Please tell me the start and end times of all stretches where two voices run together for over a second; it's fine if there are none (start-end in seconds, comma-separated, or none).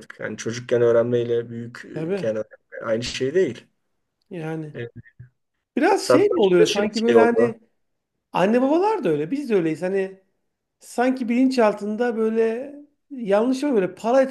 6.0-7.6